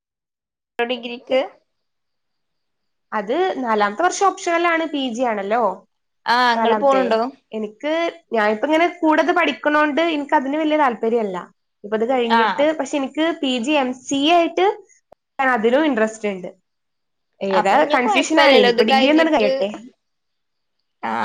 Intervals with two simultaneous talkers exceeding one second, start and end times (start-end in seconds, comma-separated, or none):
17.6-19.5